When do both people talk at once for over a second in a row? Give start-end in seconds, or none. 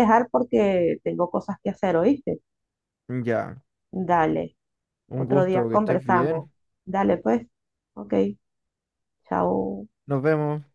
5.1-6.5